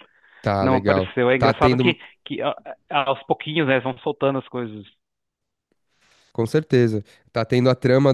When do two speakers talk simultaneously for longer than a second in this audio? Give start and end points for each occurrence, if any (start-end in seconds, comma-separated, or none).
0.6-2.0